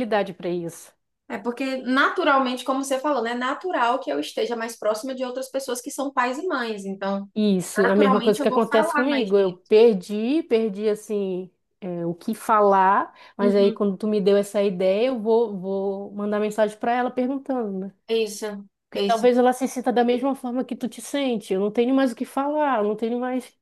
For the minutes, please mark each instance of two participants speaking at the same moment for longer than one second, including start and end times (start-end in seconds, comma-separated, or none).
7.8-9.6